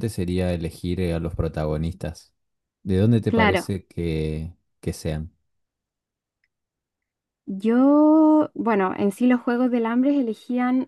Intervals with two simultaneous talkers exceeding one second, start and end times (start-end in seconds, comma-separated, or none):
none